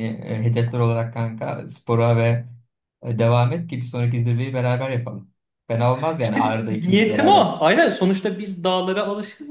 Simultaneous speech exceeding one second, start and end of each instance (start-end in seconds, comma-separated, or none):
6.2-7.5